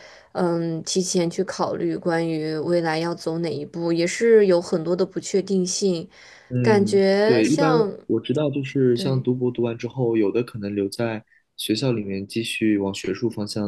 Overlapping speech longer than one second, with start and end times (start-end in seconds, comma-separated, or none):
6.6-7.9